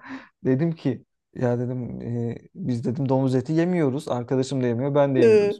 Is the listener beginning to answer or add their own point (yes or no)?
no